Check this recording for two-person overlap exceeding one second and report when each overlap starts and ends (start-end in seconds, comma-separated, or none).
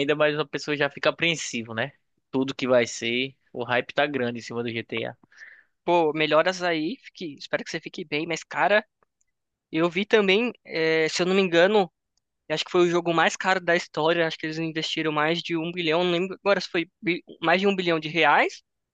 none